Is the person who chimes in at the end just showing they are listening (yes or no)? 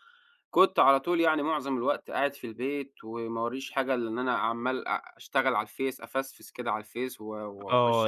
no